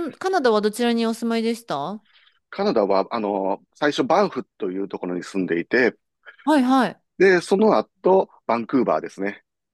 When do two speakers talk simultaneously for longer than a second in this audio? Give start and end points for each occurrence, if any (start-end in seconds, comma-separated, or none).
none